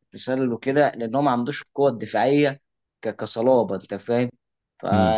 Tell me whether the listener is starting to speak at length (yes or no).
no